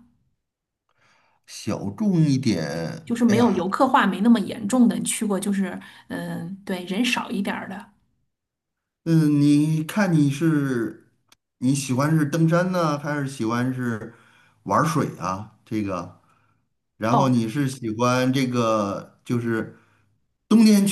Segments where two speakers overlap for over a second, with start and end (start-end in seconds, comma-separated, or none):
none